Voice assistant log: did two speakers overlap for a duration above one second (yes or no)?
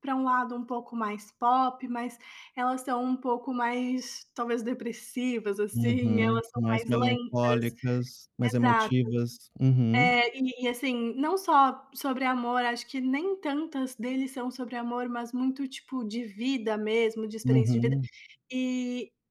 yes